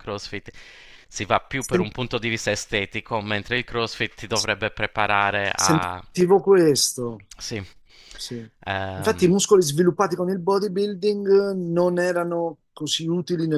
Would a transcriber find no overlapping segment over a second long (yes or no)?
yes